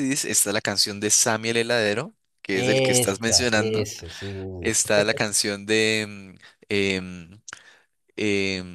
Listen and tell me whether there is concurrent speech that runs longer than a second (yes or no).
yes